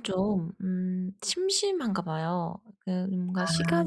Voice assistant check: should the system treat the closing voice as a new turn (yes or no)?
no